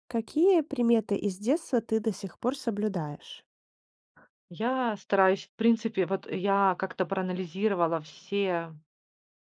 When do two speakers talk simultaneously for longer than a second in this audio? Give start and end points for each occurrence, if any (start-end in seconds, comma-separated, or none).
none